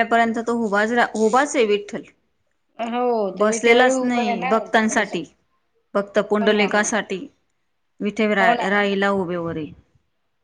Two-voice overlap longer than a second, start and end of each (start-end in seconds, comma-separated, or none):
3.4-5.1